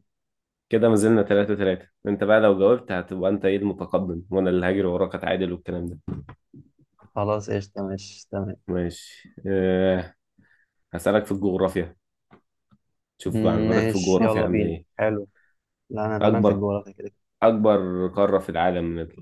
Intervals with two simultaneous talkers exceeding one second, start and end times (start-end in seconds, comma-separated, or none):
13.2-14.8